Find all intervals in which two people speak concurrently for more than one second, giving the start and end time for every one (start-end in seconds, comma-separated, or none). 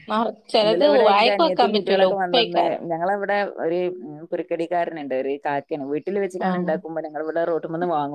0.6-2.8